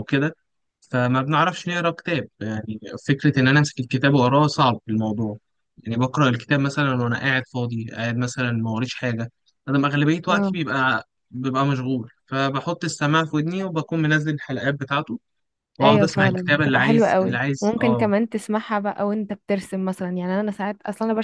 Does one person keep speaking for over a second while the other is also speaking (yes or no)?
yes